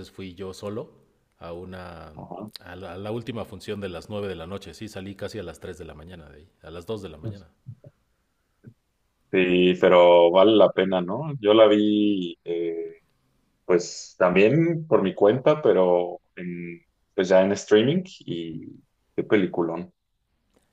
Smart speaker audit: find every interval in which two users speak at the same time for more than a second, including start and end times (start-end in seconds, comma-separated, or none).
none